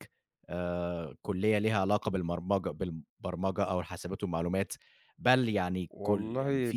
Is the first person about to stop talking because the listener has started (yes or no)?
no